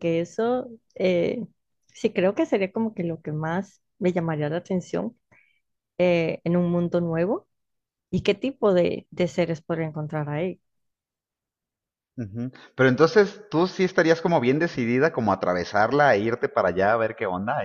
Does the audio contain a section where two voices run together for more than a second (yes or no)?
no